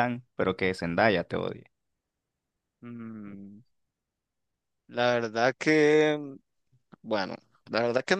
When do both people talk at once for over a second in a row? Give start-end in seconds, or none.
none